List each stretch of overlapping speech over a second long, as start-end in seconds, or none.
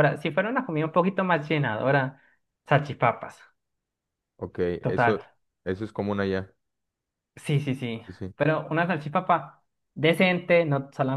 none